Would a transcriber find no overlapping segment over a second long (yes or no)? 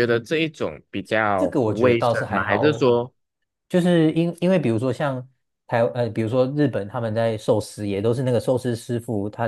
no